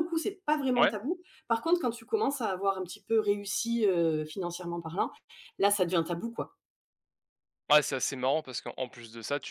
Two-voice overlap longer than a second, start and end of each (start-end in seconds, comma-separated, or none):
none